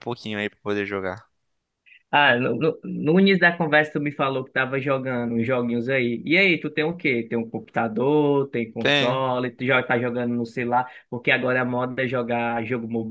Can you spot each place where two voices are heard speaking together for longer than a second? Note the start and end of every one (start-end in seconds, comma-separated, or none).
none